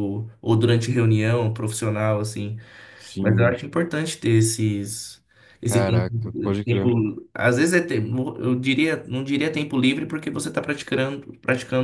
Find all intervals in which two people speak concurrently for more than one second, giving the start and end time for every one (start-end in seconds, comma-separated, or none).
5.6-6.9